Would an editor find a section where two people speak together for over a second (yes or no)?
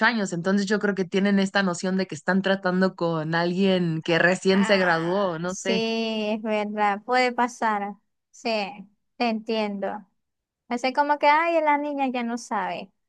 yes